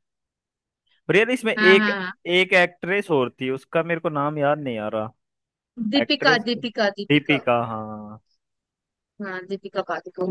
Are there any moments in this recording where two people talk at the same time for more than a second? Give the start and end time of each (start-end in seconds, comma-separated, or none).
6.0-7.4